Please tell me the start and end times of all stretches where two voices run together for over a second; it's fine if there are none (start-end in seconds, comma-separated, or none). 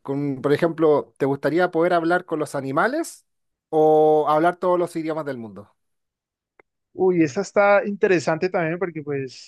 none